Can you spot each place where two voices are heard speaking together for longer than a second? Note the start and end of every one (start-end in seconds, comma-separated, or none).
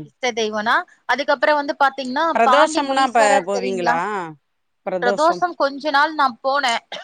2.4-4.0